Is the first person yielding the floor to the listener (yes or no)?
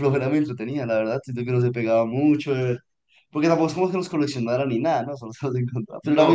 yes